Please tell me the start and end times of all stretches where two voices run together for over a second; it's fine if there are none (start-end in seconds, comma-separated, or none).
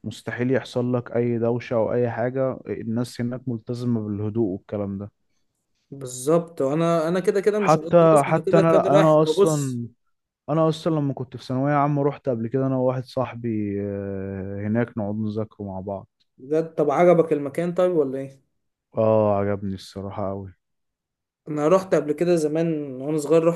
7.5-9.8